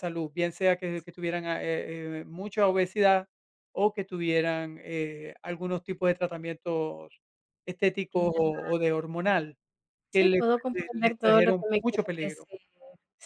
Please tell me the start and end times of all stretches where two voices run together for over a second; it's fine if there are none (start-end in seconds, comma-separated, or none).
10.1-12.5